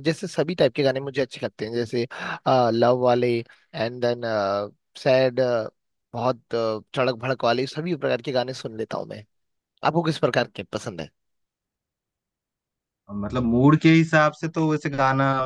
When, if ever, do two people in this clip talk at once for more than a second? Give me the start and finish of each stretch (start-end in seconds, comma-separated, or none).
none